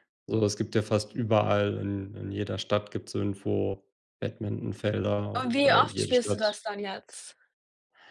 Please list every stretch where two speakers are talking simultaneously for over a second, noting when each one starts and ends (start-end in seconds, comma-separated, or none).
5.3-6.6